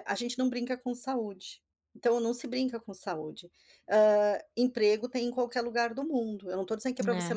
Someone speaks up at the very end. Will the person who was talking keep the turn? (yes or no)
yes